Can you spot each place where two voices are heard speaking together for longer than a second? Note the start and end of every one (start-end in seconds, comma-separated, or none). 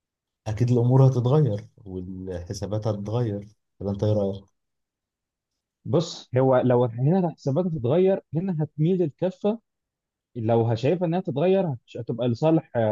none